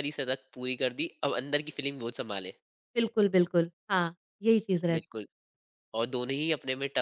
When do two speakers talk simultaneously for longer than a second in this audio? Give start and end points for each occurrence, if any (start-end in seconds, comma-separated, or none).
none